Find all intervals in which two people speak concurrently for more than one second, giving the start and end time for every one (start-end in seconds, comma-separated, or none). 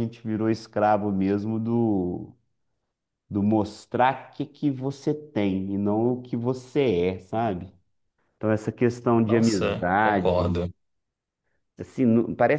9.2-10.6